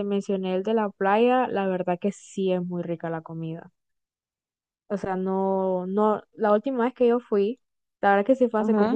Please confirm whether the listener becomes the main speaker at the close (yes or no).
no